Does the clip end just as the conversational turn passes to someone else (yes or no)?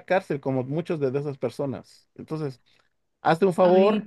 yes